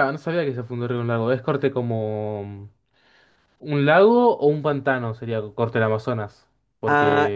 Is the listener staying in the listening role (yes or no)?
no